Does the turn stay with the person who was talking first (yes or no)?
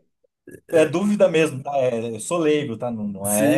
no